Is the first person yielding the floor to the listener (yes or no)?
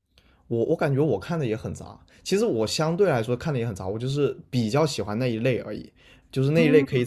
no